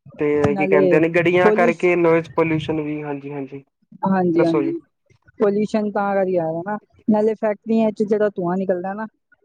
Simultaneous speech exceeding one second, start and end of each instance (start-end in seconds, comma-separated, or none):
none